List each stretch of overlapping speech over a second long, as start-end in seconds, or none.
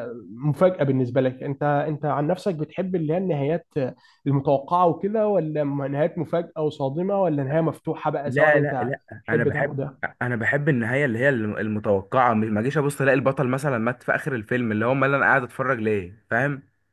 8.3-9.8